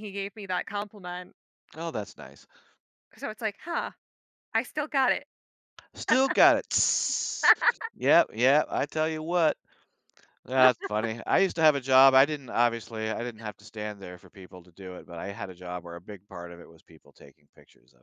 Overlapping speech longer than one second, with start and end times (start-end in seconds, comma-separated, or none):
none